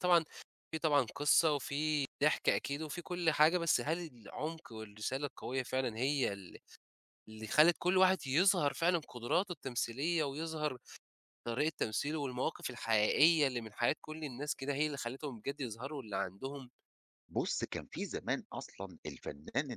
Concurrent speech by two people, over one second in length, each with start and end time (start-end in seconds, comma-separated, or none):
none